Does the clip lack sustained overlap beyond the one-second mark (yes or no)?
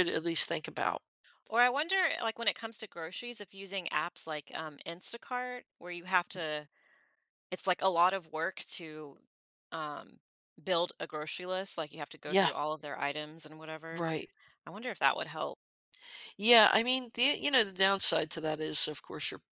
yes